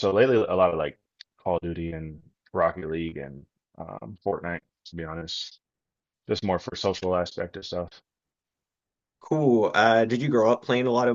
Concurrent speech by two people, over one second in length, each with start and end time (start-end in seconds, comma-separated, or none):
none